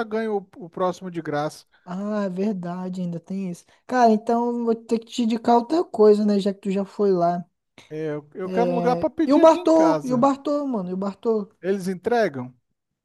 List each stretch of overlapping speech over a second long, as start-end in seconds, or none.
8.5-10.3